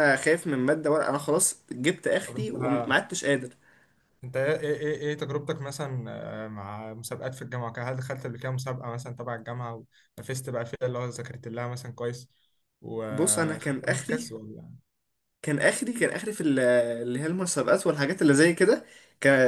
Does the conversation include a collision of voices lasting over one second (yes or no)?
yes